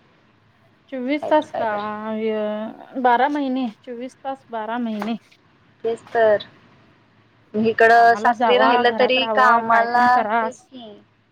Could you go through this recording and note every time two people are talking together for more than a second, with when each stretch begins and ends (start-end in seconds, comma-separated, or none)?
7.9-10.4